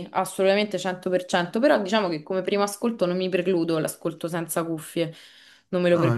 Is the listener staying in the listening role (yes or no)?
no